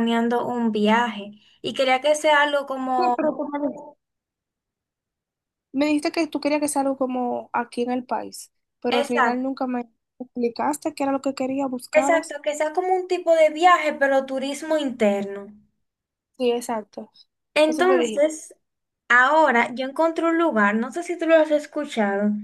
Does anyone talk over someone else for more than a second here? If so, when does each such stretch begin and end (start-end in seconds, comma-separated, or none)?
none